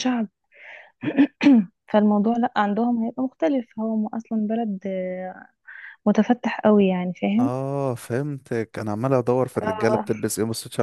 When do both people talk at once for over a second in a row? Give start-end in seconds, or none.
none